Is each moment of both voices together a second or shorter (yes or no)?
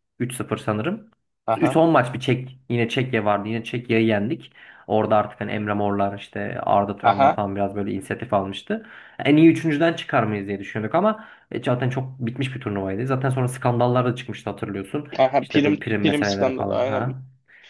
no